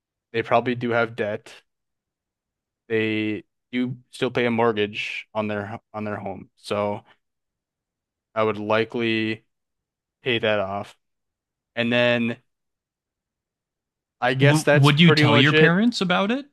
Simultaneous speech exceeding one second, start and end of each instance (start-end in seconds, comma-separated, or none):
14.4-15.8